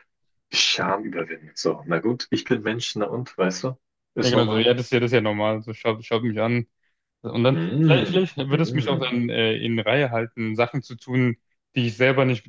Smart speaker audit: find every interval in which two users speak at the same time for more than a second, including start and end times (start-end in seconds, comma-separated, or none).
7.5-9.2